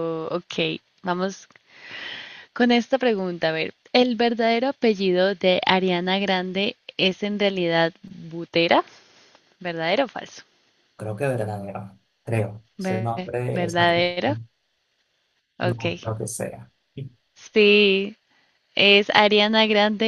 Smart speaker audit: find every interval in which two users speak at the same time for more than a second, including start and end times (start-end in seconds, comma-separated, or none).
12.8-14.3